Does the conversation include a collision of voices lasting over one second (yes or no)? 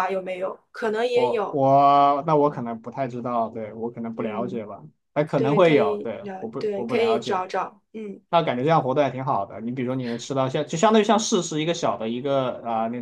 yes